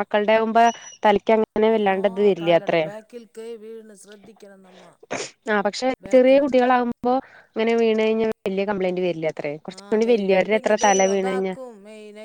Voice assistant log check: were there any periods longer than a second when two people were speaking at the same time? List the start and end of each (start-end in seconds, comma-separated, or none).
9.8-11.5